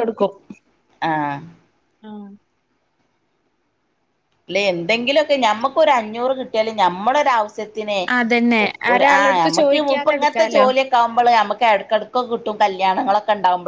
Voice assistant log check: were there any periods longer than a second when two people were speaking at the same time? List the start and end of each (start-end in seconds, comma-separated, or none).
8.9-10.7